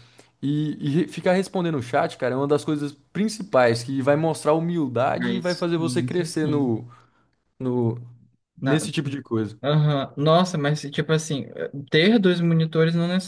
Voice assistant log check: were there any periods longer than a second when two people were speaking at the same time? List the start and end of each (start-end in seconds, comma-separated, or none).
5.2-6.7